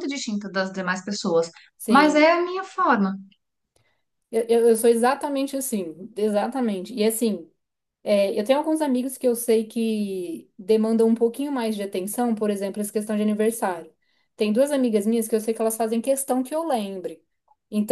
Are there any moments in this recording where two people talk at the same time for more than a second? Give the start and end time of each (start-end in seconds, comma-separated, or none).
none